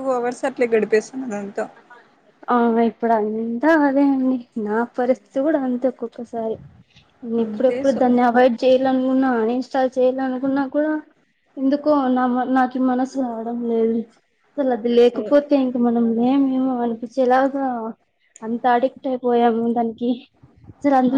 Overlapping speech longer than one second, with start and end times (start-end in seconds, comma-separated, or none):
none